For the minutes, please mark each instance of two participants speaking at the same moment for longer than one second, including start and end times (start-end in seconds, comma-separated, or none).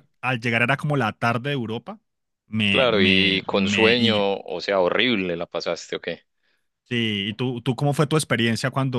2.7-4.2